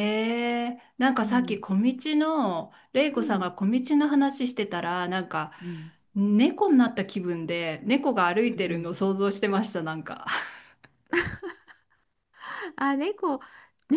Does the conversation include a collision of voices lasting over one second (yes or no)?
no